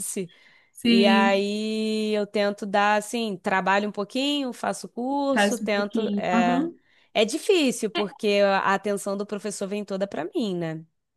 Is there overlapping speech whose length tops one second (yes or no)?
yes